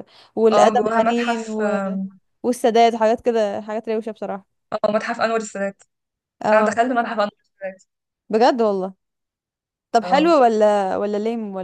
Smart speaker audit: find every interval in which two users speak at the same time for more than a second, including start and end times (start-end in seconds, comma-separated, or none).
0.5-1.8